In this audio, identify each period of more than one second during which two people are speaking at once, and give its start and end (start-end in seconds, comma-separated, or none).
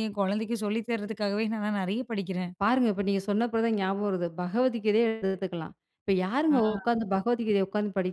none